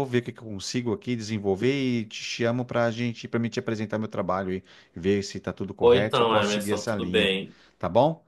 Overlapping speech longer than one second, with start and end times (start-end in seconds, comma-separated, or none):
5.8-7.3